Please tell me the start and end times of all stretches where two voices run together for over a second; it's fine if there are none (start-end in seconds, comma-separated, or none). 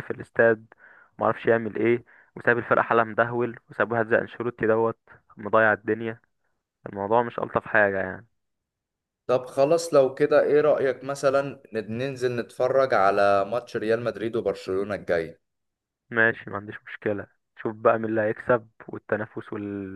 none